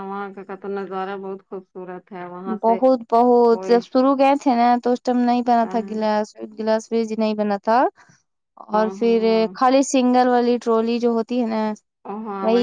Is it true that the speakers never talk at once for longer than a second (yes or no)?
yes